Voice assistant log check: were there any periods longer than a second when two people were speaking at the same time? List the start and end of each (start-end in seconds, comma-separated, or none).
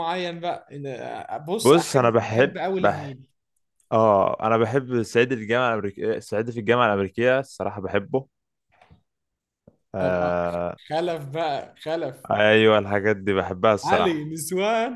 1.6-3.1